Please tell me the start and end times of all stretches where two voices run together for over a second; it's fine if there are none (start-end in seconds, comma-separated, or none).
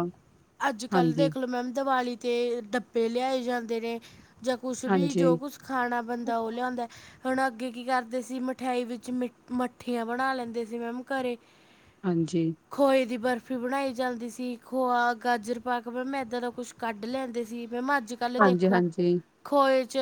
none